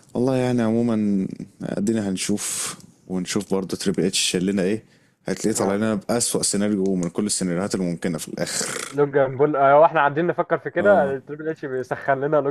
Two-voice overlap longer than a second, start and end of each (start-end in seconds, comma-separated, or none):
none